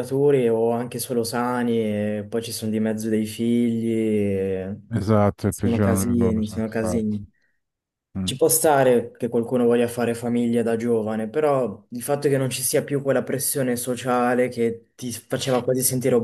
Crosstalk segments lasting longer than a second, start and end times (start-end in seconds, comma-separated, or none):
5.5-7.2